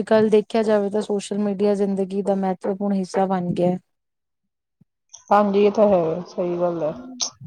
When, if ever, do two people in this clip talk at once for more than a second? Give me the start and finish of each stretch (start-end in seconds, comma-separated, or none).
none